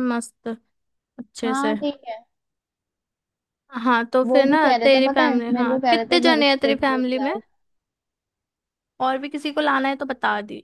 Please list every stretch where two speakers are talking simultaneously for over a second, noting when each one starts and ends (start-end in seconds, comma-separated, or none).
4.2-7.3